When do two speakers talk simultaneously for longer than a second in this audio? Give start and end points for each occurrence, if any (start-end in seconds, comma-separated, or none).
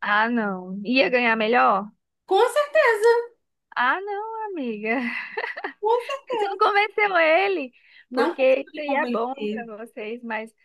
8.1-9.7